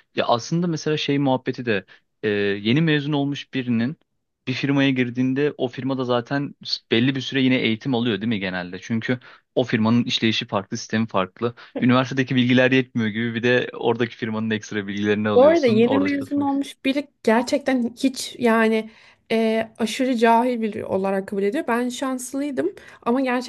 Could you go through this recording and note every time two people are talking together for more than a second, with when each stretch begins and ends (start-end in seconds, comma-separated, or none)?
15.3-16.7